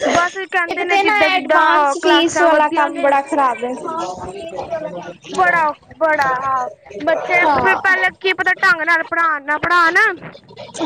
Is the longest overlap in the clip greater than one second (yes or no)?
yes